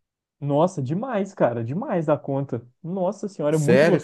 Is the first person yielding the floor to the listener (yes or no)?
yes